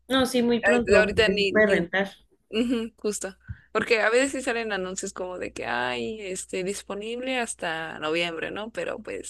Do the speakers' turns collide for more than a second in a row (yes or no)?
yes